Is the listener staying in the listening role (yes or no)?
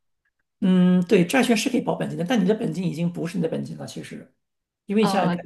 yes